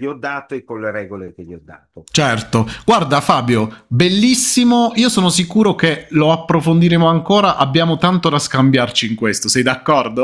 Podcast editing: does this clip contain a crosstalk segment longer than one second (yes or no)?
no